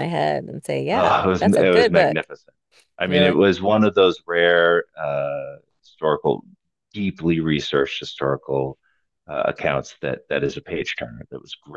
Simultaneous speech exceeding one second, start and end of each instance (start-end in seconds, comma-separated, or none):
0.9-2.3